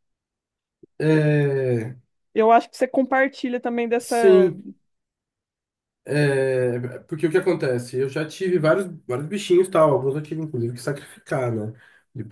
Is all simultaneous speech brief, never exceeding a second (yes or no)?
yes